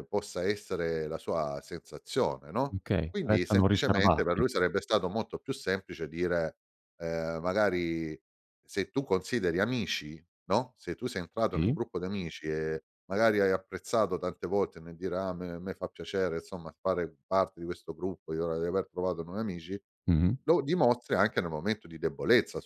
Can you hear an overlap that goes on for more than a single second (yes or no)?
yes